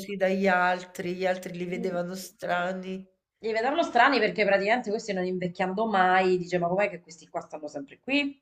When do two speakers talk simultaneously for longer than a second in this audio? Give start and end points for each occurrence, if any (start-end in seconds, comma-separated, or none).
none